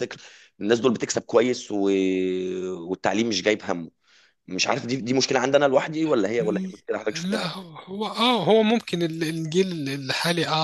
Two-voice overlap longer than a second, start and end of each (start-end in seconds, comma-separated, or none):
none